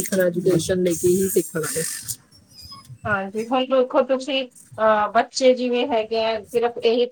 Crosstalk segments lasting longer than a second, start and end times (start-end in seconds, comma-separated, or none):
none